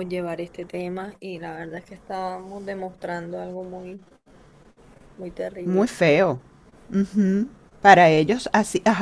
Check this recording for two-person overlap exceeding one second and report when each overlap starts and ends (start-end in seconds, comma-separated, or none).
none